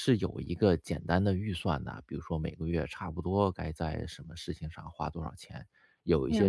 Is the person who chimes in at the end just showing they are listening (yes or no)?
yes